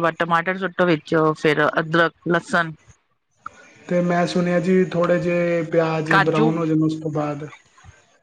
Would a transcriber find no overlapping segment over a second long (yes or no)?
yes